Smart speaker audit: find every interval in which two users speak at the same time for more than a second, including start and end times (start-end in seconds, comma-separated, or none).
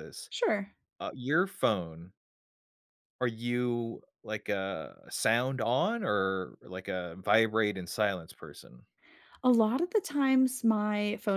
none